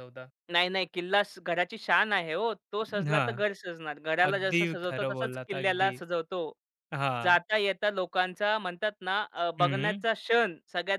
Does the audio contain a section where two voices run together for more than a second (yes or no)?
yes